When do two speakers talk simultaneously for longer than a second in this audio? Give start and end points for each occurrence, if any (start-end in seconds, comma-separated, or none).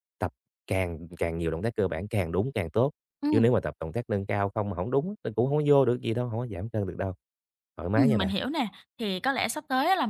none